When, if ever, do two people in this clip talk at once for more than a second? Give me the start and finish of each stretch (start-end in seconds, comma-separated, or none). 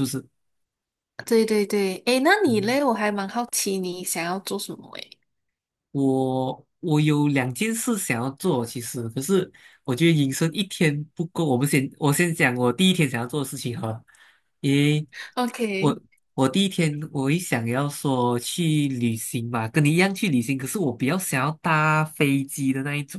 none